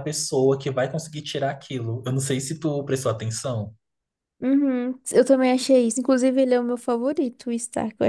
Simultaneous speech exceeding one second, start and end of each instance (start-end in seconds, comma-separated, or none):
none